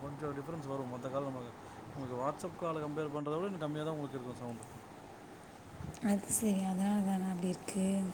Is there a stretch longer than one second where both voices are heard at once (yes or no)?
no